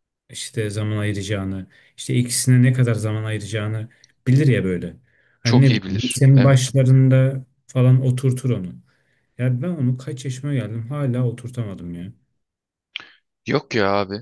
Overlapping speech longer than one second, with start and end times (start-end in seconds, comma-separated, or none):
5.4-6.7